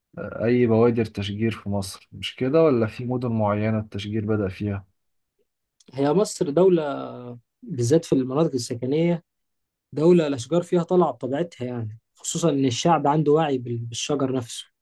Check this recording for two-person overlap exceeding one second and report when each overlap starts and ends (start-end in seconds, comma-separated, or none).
none